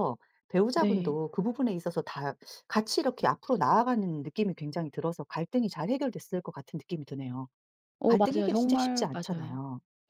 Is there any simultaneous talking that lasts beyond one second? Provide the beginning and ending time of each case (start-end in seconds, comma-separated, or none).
8.1-9.6